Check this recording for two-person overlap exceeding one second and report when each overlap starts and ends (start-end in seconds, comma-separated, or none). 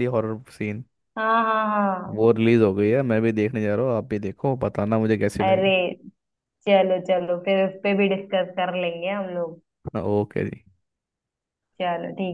none